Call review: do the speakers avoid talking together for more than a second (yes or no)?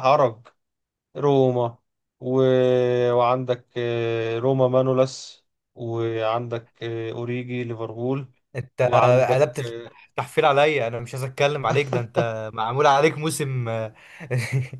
yes